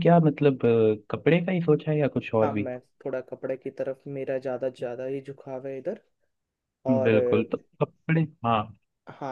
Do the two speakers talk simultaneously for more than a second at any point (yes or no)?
no